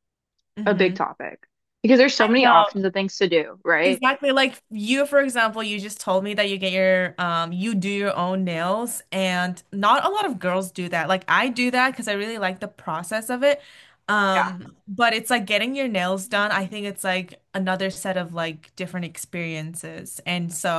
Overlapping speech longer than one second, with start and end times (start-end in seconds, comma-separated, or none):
none